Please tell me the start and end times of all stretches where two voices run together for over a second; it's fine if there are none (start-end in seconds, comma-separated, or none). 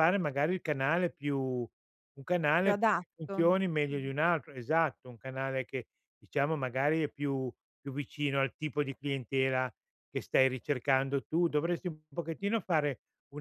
2.6-4.1